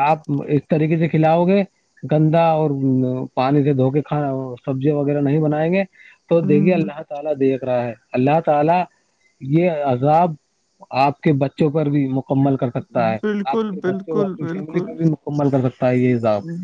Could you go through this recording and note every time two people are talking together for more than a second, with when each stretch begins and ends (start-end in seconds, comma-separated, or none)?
13.2-14.9